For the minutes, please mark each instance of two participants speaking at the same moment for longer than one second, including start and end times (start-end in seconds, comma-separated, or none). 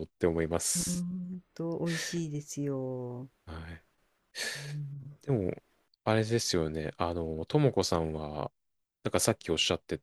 none